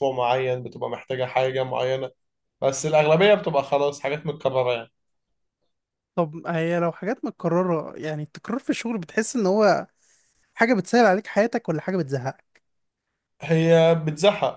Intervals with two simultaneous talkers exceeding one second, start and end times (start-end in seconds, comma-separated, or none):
none